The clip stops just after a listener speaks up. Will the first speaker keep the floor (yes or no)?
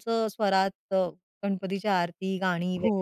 no